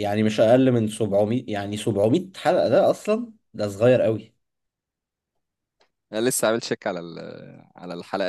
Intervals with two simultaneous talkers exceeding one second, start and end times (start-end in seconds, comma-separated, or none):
none